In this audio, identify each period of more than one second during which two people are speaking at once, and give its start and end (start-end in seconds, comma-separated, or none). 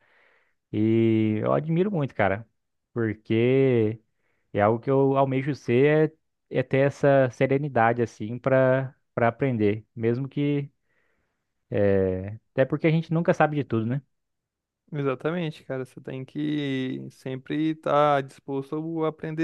none